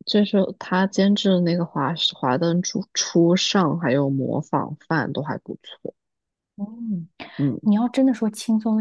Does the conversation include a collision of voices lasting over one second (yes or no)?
no